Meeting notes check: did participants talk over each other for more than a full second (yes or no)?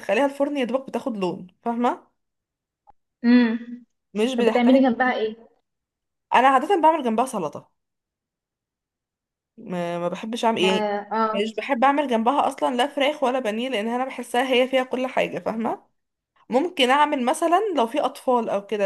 no